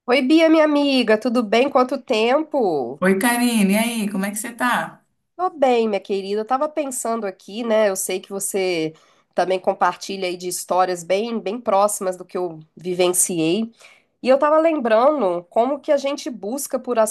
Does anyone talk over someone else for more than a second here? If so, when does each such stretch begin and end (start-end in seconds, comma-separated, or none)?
none